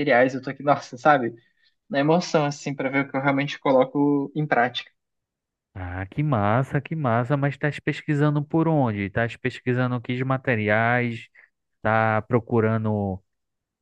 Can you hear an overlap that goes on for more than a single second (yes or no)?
no